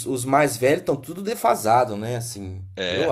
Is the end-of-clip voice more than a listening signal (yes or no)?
yes